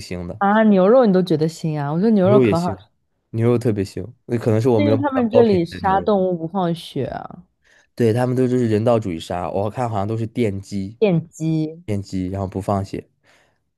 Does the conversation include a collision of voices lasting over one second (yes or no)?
yes